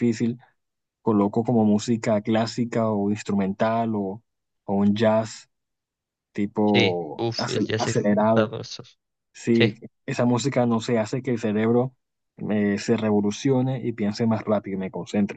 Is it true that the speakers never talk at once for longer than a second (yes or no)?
no